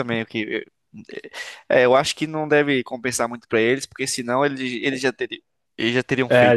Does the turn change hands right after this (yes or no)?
yes